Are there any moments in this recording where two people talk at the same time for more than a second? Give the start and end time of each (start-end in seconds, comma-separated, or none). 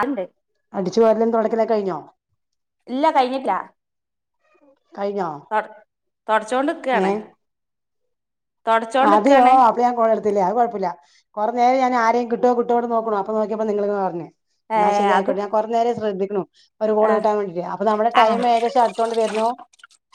none